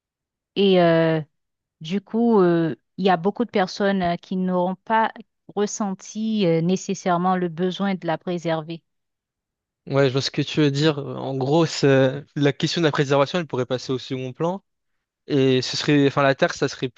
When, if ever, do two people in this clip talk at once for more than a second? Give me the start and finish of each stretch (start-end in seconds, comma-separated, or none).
none